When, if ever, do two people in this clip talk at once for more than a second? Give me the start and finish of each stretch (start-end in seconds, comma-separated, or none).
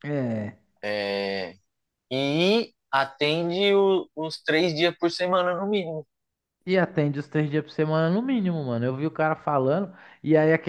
none